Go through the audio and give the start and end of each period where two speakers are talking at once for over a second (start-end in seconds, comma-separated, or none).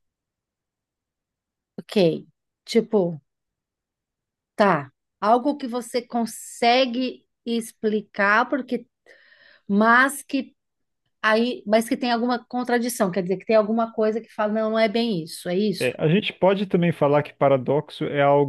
none